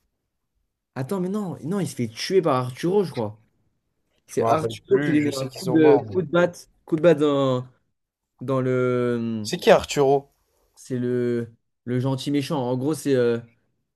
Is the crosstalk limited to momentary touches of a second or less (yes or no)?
no